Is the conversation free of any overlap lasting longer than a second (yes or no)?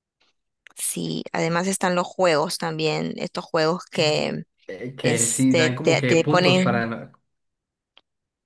no